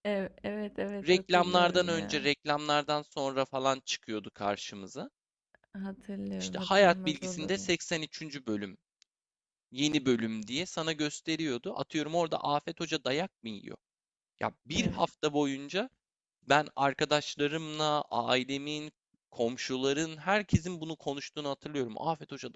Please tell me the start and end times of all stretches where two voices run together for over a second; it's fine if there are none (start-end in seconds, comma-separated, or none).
1.1-2.3, 6.4-7.7